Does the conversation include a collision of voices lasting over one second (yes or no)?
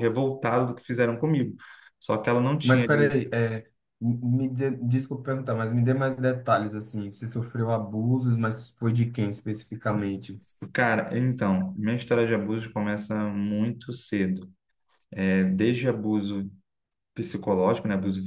no